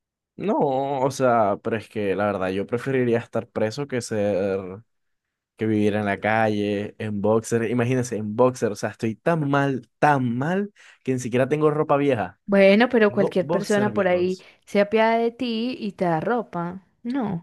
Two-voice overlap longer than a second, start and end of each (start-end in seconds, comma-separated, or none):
13.1-14.5